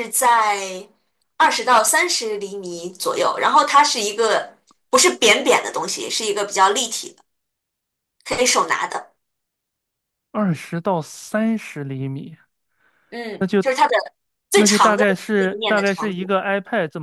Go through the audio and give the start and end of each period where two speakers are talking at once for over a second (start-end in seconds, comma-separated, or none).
14.5-16.3